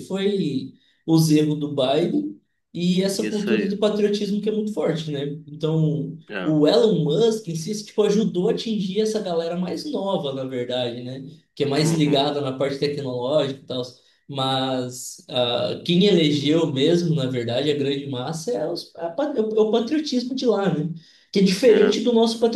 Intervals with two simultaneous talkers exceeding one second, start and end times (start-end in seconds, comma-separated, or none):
none